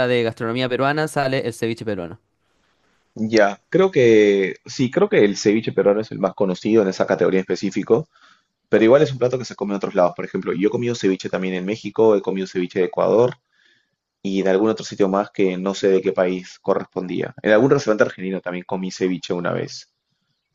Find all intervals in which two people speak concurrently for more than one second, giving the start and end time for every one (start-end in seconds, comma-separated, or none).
none